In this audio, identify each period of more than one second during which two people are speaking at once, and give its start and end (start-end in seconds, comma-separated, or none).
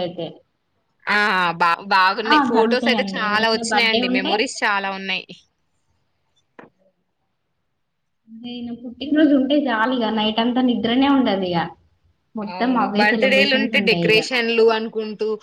2.3-4.3